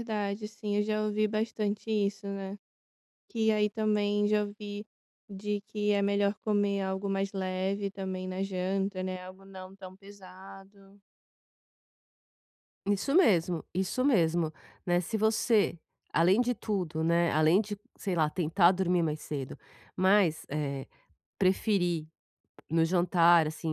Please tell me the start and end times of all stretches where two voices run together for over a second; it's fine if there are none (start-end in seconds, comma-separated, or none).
none